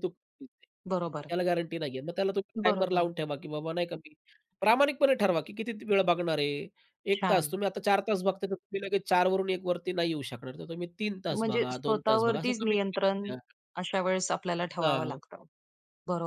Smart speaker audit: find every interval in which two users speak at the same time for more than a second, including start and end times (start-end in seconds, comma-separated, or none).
11.3-13.2